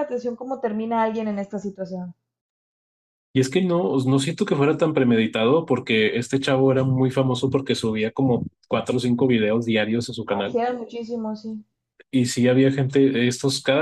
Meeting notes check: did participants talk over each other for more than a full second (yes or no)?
no